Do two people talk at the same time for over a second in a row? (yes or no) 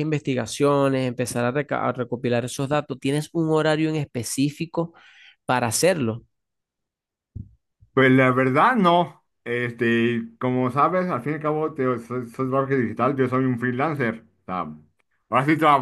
no